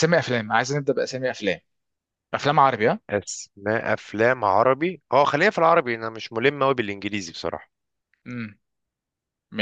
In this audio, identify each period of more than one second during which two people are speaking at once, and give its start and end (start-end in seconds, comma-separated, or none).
none